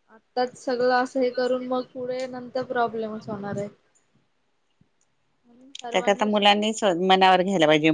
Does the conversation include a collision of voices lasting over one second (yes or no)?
no